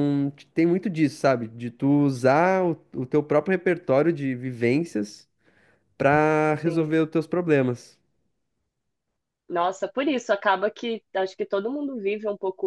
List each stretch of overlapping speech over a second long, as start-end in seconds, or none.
none